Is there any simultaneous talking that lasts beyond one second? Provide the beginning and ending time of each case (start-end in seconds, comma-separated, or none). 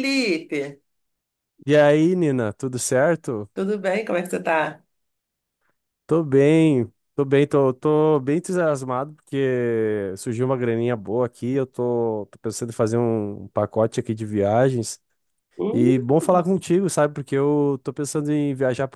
none